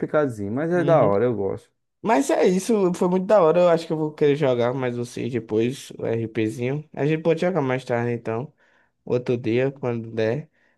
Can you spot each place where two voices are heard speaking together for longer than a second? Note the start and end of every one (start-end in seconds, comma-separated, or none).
none